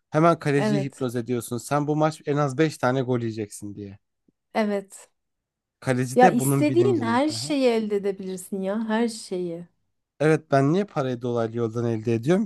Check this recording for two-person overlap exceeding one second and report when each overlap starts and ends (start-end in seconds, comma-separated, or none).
6.1-7.5